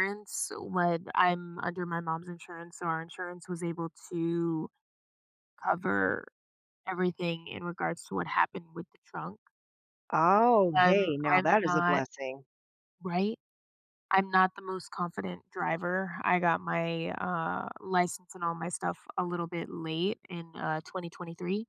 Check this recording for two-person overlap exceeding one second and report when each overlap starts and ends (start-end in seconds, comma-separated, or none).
10.7-12.0